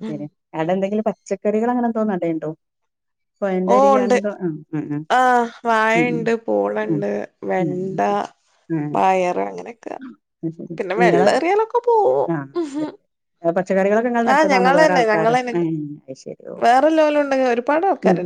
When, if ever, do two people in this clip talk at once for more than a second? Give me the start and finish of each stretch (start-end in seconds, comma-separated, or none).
none